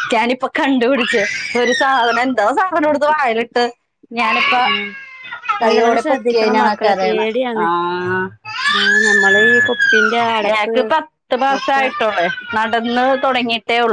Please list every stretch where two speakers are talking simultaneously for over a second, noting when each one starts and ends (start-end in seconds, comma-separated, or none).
5.6-7.3